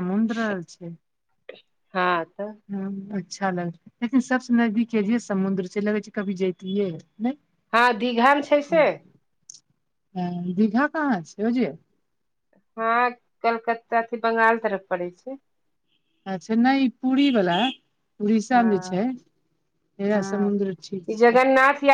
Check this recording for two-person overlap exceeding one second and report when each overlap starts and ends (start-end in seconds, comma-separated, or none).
none